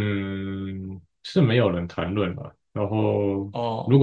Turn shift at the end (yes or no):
no